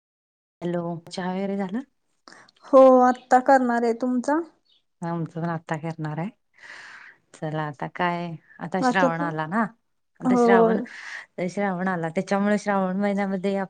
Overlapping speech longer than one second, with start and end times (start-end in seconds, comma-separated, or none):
none